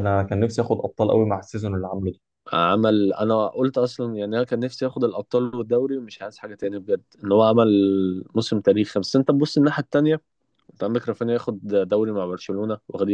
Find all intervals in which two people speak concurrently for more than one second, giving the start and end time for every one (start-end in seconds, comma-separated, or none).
none